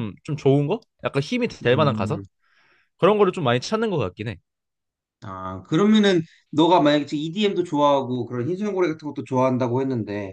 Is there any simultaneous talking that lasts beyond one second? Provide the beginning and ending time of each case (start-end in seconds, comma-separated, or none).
none